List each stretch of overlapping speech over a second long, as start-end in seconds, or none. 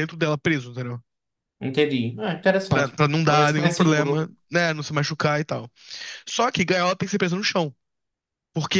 2.7-4.3